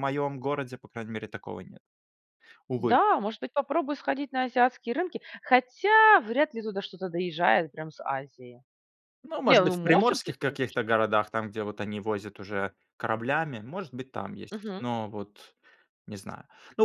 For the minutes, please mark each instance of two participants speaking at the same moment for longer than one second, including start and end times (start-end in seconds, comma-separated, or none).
9.4-10.9